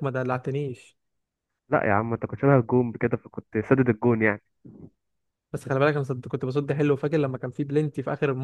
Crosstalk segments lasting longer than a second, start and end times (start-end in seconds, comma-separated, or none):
none